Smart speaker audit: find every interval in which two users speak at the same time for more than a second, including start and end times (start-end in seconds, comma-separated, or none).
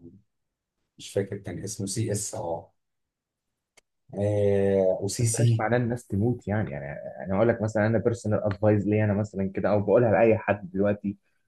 none